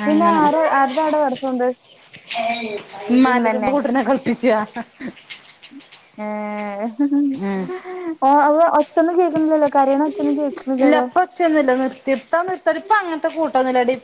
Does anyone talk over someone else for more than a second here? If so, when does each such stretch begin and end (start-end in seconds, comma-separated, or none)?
none